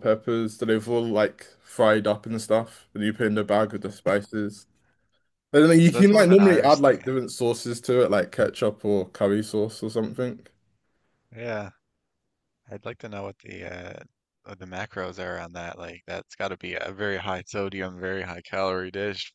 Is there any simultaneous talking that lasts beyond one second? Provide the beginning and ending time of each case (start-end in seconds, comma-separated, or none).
5.8-7.1